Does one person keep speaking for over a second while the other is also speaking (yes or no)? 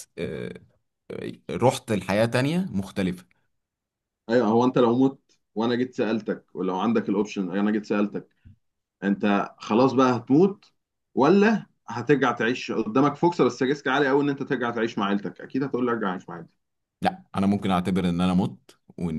no